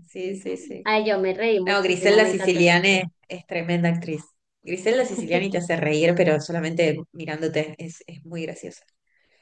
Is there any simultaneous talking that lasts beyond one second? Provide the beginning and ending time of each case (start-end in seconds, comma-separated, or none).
1.6-3.0